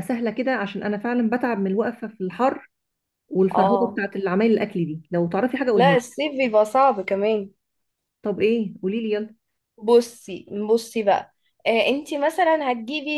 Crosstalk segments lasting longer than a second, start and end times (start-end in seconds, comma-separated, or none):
none